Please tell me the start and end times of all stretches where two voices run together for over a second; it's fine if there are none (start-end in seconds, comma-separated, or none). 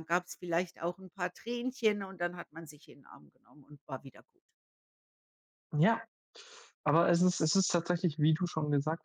none